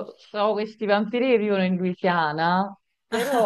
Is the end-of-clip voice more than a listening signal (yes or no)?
no